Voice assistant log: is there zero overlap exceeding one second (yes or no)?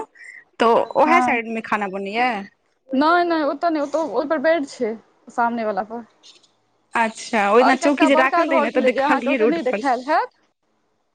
no